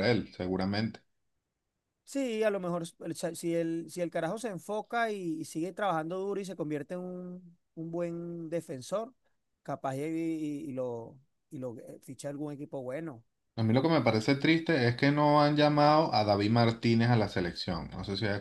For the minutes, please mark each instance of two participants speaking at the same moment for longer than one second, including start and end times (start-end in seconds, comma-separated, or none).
none